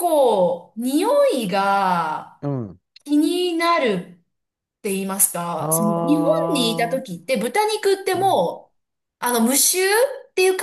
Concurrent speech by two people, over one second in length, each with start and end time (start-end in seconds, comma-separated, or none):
5.6-7.0